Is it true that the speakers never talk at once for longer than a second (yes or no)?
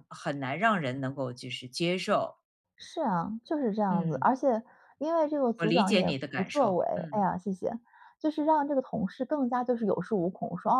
no